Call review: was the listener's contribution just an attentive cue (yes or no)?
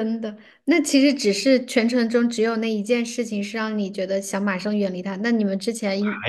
no